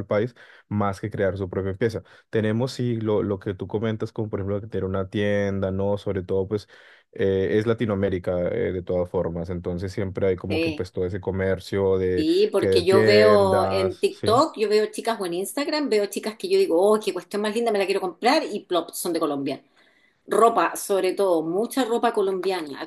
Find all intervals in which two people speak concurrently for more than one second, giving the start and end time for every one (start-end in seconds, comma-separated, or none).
12.2-14.4